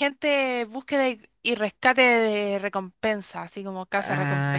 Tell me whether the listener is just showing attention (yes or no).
no